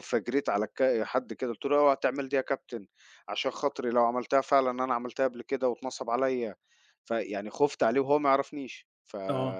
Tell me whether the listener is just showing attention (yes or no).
yes